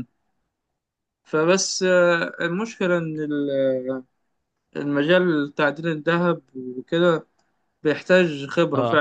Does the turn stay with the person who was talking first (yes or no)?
yes